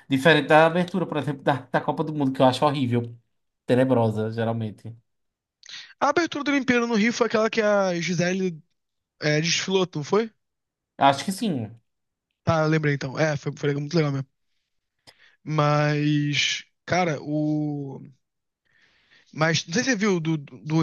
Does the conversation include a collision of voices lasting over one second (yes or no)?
no